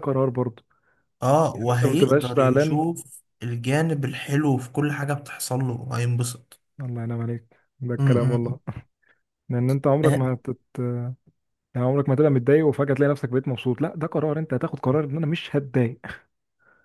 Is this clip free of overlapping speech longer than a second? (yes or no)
no